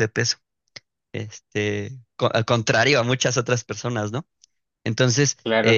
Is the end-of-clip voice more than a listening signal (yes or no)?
yes